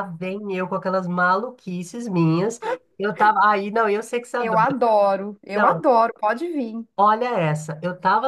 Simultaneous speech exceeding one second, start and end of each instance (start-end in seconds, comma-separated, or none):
none